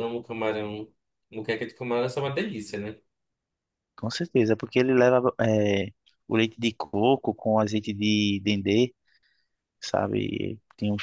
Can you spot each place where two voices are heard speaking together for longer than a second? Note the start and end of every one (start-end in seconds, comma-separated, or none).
none